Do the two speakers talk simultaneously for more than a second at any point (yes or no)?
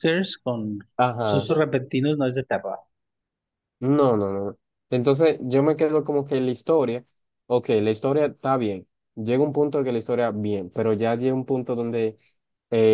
no